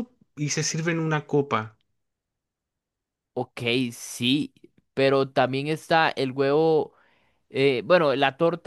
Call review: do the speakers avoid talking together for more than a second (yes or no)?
yes